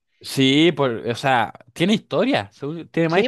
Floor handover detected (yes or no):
no